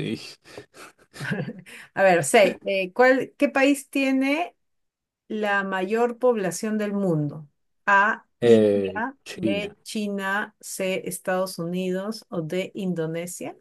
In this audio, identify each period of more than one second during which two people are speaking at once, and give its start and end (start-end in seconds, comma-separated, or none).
8.4-9.7